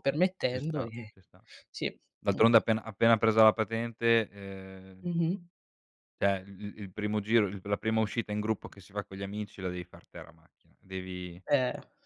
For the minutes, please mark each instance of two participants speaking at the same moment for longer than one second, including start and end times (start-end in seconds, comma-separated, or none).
none